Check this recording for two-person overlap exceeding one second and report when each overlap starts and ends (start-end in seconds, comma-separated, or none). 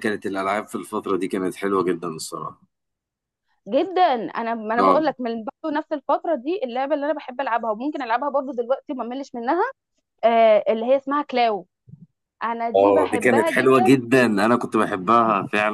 12.7-14.0